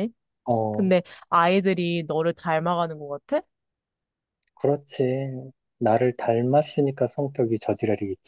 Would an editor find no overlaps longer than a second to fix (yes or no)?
yes